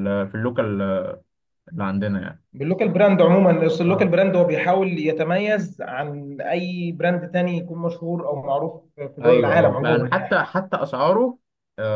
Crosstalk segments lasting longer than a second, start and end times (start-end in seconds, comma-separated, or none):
9.2-10.5